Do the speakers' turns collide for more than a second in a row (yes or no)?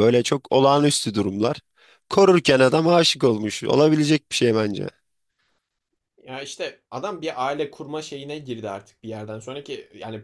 no